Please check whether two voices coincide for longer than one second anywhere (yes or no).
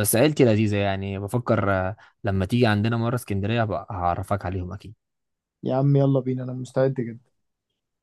no